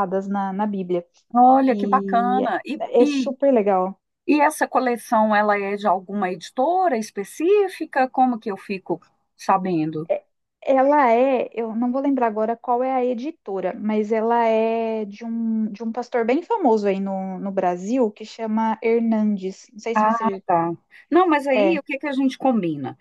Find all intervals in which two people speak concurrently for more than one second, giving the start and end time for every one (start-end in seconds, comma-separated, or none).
1.7-3.3